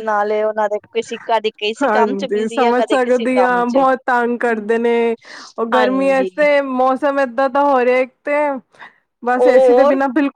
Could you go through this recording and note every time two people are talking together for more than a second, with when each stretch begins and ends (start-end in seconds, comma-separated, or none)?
1.8-3.8